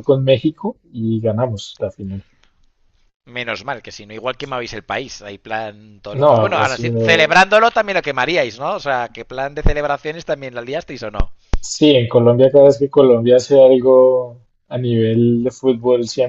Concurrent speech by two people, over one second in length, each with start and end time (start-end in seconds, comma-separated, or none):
6.1-7.4